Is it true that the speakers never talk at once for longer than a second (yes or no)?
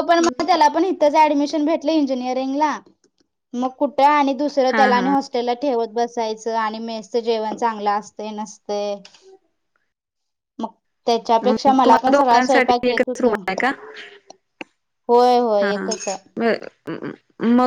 no